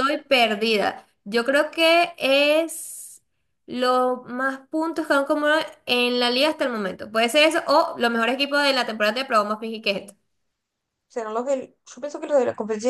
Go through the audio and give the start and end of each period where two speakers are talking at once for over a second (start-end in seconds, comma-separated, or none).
none